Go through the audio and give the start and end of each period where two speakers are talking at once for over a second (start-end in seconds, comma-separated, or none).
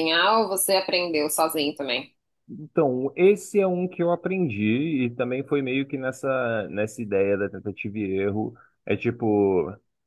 none